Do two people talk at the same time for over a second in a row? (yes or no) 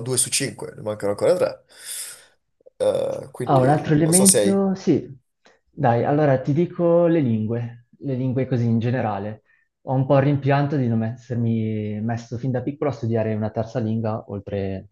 yes